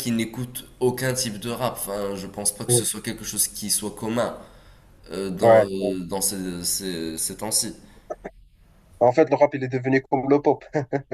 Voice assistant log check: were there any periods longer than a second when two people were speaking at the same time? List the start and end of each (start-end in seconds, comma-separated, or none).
none